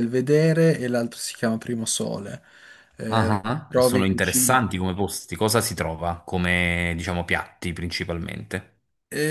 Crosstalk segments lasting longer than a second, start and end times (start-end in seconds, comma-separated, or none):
3.1-4.6